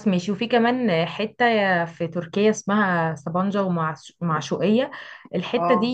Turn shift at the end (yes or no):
no